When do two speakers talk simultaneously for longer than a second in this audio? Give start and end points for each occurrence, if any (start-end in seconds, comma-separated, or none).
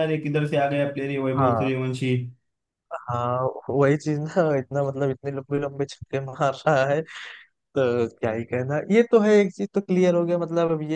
none